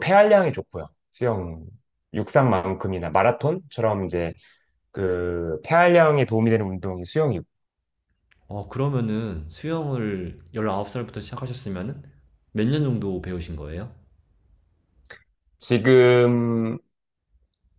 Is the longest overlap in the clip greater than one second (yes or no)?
no